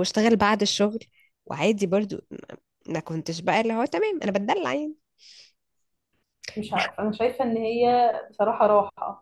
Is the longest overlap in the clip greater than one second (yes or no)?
no